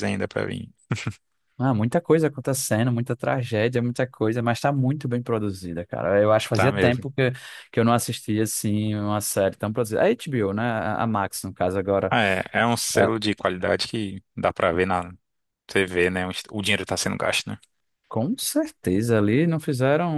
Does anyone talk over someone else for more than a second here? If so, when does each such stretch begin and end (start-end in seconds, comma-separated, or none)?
none